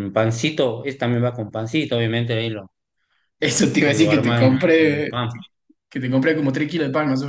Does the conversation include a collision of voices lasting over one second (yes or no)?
yes